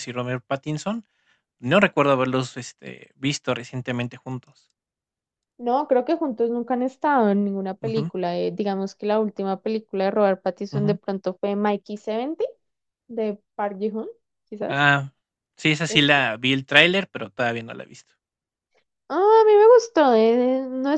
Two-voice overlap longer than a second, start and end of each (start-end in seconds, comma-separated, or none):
none